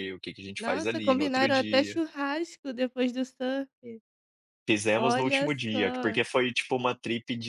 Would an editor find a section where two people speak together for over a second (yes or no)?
yes